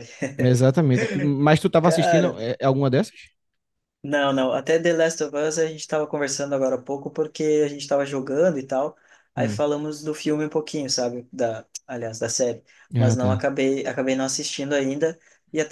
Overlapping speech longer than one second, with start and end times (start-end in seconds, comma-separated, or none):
none